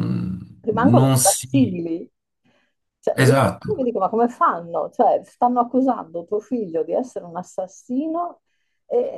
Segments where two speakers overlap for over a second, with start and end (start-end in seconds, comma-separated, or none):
0.6-1.8